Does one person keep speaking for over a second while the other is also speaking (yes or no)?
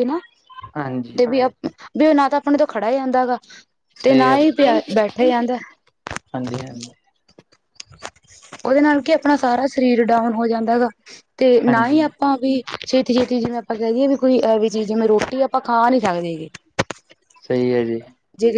no